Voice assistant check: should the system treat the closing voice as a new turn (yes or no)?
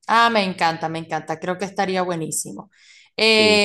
no